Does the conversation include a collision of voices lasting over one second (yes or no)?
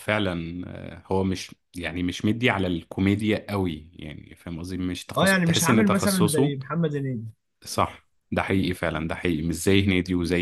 yes